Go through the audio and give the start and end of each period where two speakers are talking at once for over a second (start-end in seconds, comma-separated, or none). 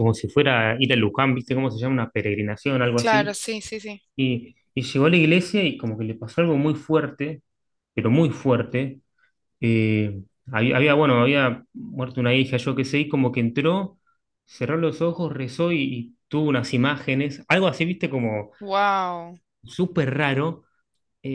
none